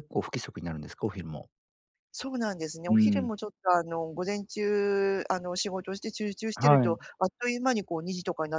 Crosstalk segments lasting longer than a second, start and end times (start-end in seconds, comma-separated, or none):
none